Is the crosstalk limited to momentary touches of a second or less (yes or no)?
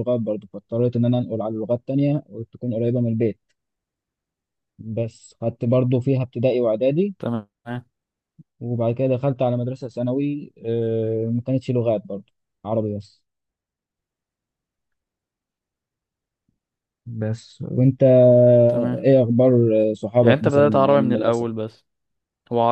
no